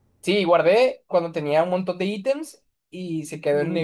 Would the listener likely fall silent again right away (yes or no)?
yes